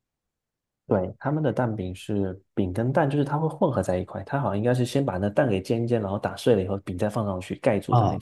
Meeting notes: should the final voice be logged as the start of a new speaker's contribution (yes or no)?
yes